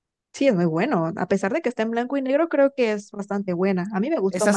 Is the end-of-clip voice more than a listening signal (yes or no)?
yes